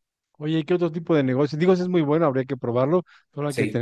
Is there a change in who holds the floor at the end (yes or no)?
no